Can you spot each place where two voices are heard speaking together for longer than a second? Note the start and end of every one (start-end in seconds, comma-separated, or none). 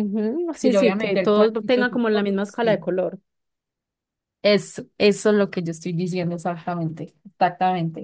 0.6-2.8